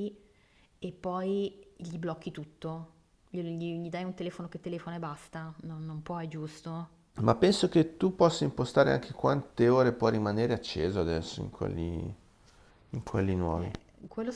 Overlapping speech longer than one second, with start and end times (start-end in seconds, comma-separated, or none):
none